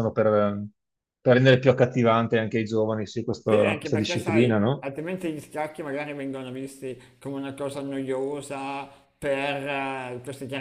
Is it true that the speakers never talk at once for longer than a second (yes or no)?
no